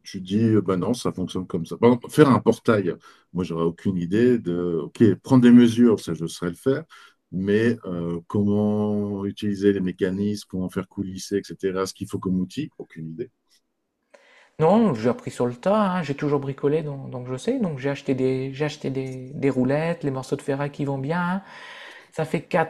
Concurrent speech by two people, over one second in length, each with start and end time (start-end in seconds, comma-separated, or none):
none